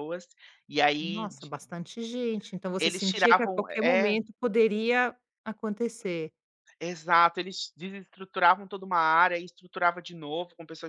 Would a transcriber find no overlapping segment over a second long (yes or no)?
no